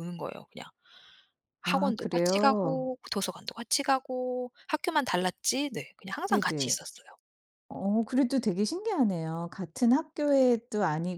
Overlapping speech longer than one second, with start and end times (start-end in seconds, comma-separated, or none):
1.6-2.9